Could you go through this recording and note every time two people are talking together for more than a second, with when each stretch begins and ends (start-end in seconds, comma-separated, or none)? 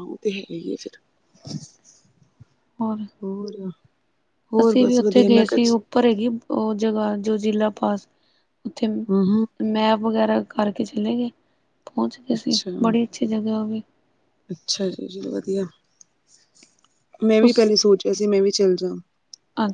4.6-5.8